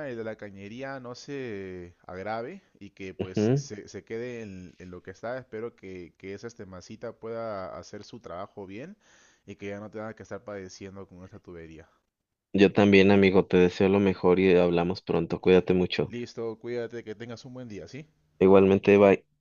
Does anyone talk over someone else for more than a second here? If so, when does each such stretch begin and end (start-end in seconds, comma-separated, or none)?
none